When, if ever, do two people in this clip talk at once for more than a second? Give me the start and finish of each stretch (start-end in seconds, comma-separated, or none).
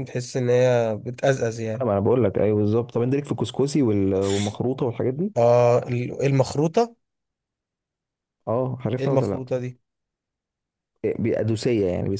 none